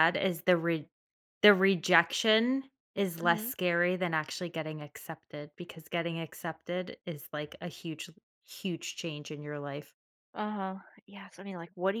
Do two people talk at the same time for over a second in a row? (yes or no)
no